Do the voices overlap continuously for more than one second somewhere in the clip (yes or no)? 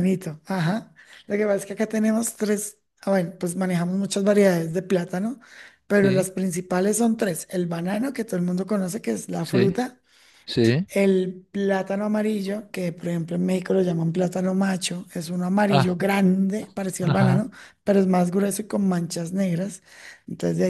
no